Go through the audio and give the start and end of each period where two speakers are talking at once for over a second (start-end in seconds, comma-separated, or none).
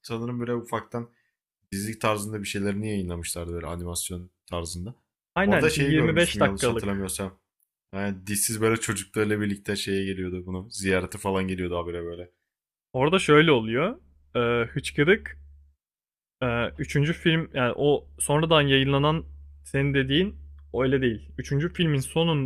5.4-7.1